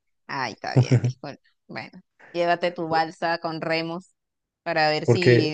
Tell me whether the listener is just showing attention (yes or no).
yes